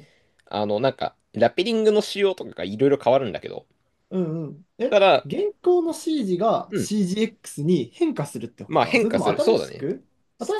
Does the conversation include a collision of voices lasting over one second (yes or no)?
yes